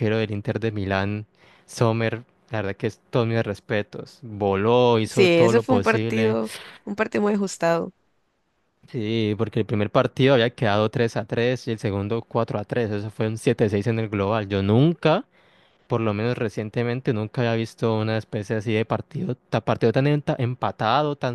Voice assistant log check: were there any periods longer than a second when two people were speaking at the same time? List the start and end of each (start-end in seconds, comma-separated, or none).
5.1-6.4